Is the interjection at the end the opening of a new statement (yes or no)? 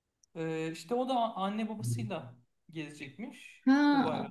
yes